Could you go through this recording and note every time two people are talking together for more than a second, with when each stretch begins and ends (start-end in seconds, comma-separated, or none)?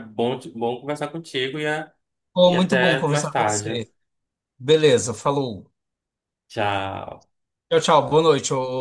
2.5-3.8